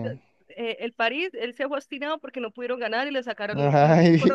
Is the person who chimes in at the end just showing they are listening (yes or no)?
yes